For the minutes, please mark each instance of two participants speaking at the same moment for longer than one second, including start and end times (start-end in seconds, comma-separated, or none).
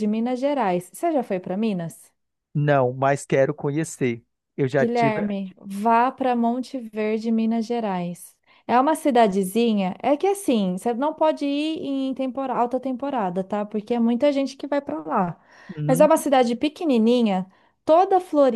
none